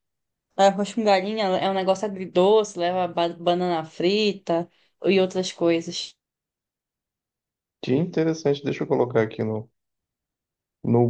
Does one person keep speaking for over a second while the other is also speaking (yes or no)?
no